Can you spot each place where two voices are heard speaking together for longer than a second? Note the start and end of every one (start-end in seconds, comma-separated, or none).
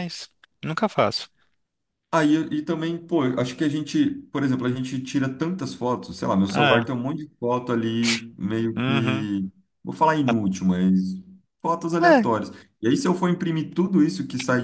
none